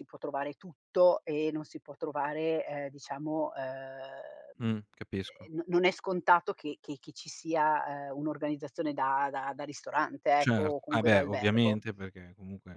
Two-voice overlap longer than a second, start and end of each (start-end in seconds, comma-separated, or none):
10.4-11.8